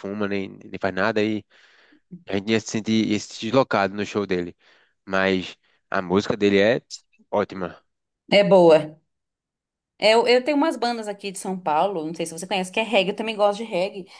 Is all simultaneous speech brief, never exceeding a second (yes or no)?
yes